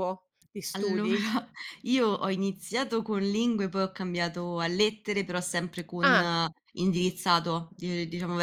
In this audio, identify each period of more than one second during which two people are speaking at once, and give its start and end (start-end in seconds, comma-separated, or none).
none